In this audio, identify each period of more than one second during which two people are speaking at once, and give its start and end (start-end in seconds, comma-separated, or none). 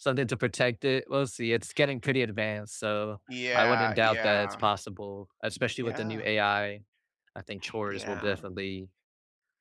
3.3-4.6